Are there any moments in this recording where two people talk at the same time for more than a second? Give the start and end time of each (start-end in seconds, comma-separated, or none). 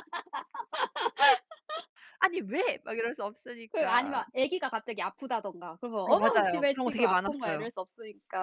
6.1-7.7